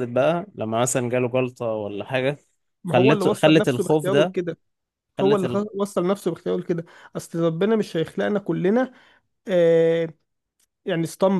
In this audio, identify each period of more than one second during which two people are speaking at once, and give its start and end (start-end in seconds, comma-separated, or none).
2.9-4.3